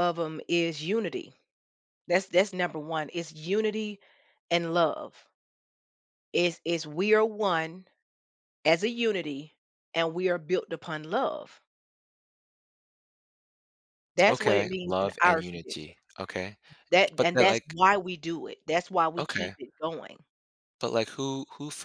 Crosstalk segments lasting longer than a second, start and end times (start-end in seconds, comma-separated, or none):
14.3-15.9